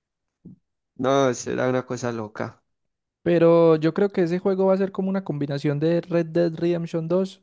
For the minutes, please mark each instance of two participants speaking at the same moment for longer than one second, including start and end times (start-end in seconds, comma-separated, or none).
none